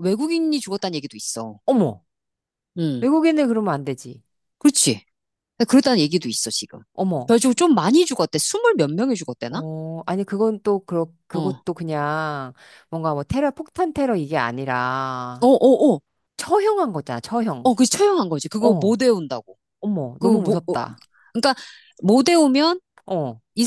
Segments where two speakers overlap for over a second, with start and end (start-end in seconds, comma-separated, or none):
none